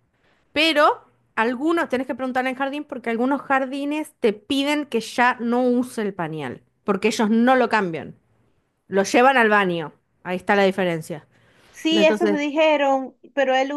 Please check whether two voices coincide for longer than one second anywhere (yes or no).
no